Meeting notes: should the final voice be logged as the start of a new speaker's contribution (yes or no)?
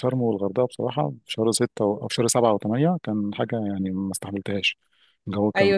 yes